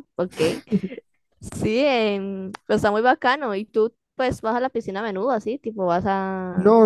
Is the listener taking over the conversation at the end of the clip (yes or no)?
yes